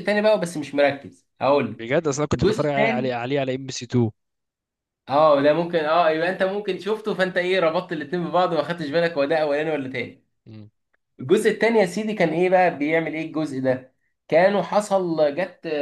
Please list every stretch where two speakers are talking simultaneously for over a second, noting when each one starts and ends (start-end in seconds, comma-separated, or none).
1.7-3.2